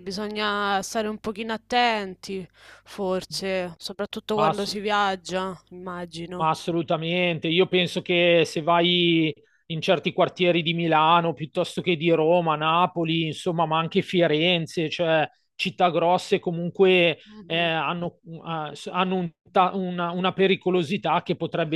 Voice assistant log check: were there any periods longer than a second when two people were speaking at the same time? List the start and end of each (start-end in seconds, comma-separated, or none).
none